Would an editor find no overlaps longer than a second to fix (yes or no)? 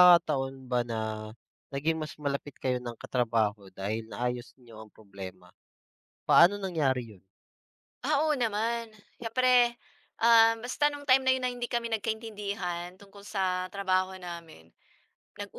yes